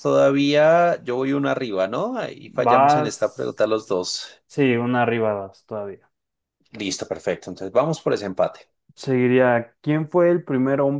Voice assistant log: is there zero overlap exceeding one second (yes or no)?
no